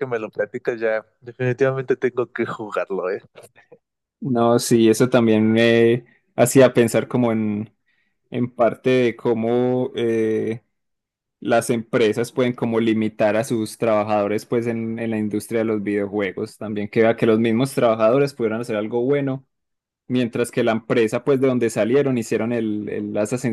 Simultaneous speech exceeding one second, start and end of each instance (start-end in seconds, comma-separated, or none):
none